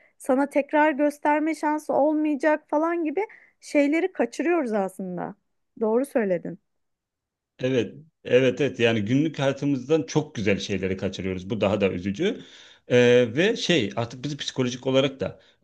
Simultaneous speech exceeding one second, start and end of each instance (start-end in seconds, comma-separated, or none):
none